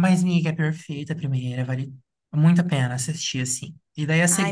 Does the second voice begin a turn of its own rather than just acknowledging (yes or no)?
no